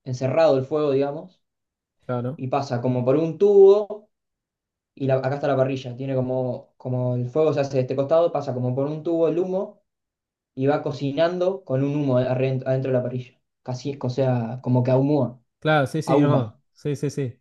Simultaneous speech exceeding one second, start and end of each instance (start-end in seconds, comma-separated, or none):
none